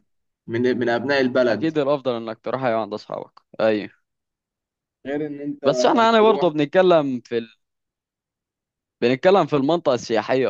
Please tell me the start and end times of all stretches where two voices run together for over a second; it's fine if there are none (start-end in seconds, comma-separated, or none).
none